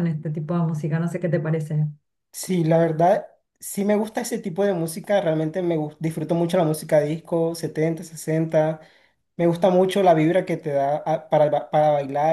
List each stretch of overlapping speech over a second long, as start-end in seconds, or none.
none